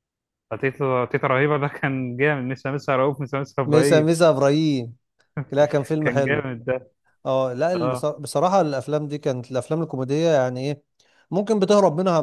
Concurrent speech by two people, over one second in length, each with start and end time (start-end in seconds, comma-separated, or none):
none